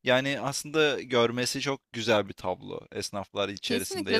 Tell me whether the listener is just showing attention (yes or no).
no